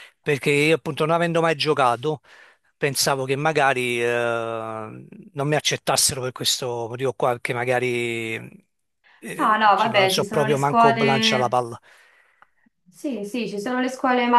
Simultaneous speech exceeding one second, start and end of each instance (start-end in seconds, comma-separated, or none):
9.4-11.6